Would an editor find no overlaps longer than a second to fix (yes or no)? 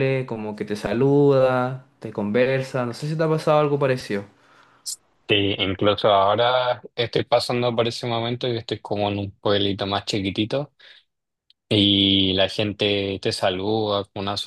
yes